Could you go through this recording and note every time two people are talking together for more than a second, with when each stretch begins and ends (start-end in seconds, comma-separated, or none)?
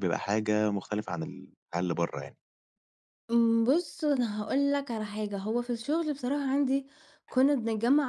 none